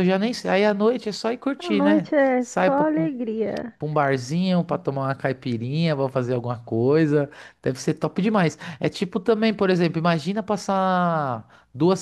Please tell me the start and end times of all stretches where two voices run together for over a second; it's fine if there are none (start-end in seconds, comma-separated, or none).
1.6-3.1